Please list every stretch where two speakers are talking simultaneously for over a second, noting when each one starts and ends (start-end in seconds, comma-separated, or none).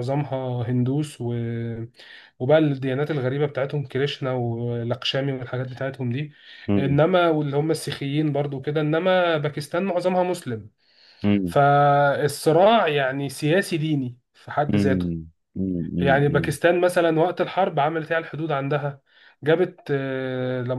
none